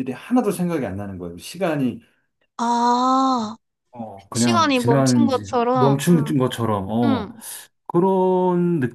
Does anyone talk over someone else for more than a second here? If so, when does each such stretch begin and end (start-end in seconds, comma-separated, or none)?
4.3-6.3